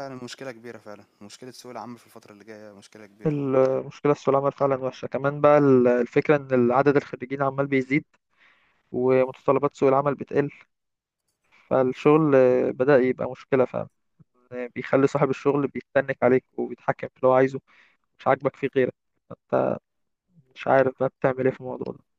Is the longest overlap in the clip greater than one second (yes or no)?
no